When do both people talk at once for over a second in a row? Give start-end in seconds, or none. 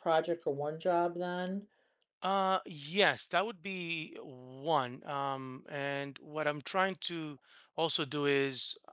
none